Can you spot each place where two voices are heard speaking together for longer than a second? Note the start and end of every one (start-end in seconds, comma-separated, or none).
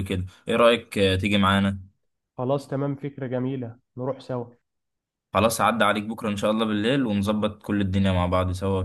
none